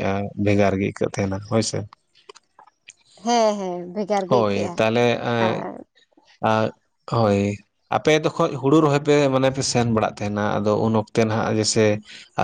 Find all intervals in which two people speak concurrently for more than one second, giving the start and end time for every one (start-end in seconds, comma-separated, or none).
none